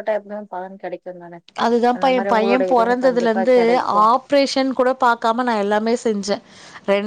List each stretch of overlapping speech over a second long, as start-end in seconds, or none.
1.9-3.5